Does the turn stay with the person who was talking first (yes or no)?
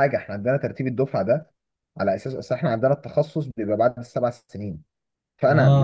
yes